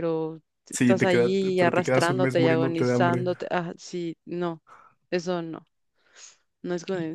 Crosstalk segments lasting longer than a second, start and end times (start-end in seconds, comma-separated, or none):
0.7-3.3